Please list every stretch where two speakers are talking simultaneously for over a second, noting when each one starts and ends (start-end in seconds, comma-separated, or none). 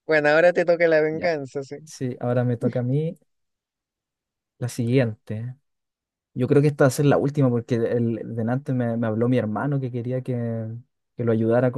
none